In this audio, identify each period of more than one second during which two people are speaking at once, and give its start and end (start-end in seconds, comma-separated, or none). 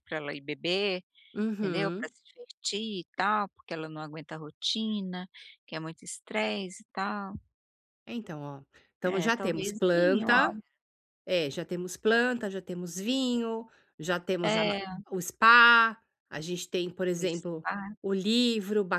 9.0-10.6